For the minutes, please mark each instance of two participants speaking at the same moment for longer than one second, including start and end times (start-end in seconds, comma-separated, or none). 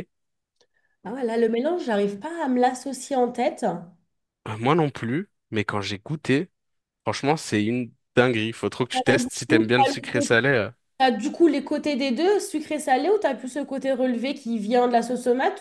8.9-10.3